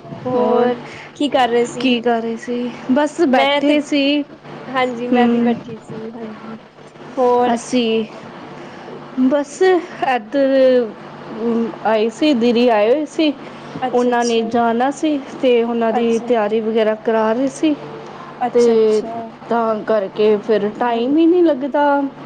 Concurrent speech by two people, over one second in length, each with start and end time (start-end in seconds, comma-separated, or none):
none